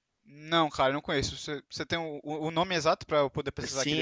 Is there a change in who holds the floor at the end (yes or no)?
yes